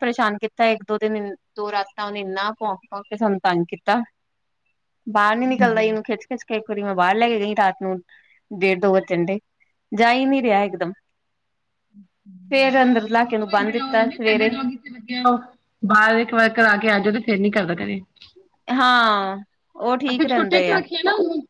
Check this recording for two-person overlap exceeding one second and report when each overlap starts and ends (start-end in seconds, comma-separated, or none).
none